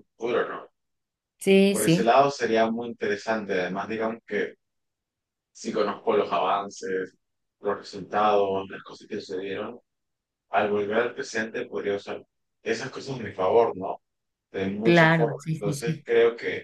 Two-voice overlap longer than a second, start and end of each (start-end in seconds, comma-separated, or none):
14.8-16.1